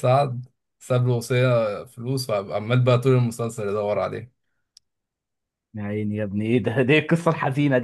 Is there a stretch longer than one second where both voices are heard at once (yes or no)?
no